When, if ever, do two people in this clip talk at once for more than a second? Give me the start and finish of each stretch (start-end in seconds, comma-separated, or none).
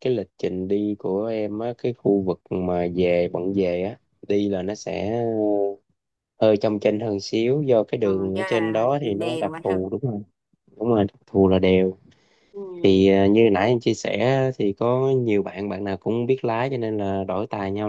8.0-9.8